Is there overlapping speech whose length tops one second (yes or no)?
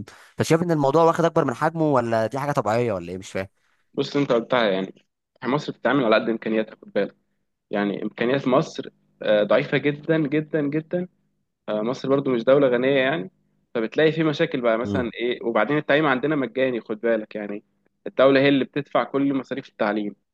no